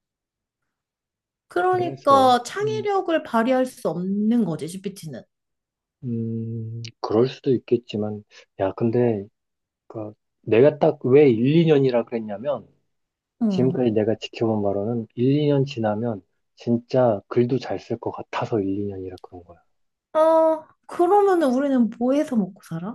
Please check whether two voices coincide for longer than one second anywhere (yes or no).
yes